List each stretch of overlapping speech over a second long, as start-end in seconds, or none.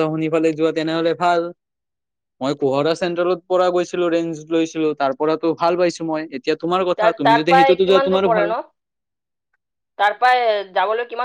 7.0-8.6